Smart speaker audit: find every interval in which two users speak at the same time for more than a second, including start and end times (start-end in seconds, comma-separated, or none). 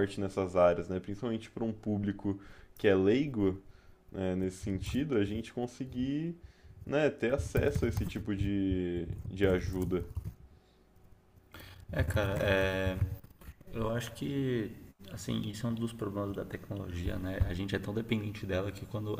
none